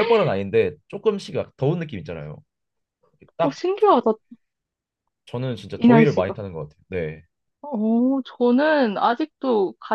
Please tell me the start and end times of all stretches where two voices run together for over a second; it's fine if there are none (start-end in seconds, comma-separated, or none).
none